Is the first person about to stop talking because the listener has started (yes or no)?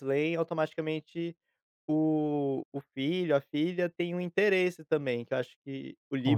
no